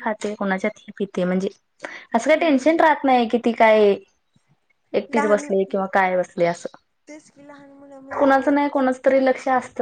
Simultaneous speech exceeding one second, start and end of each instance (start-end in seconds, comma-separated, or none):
none